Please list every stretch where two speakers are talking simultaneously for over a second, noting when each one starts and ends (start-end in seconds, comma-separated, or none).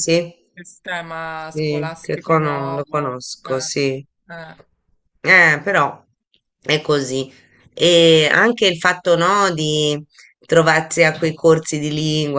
1.3-3.7